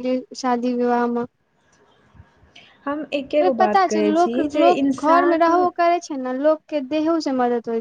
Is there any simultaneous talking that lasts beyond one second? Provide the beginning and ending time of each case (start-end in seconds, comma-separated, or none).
3.6-5.5